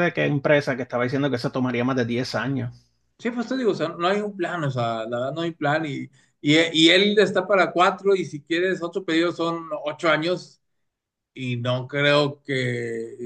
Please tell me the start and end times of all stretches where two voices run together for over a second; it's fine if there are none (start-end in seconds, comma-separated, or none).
none